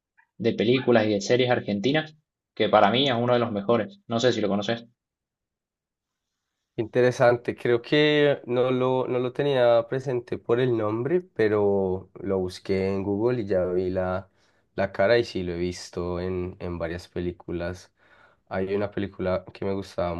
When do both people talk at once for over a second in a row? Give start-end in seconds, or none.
none